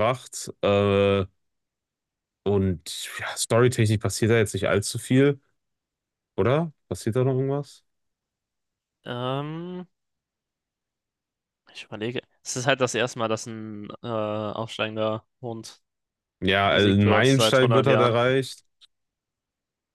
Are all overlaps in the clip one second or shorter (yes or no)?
no